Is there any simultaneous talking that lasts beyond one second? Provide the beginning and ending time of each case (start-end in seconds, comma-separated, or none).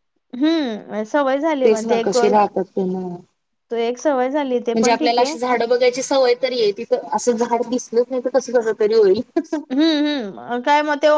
none